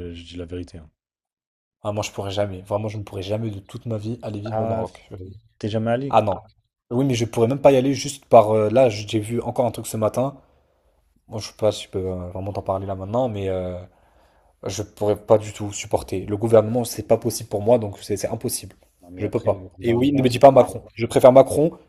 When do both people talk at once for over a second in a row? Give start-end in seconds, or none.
19.1-20.4